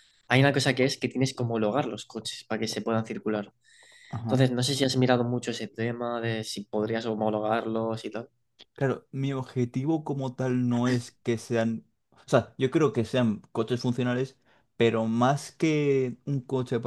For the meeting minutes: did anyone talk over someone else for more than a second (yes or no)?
no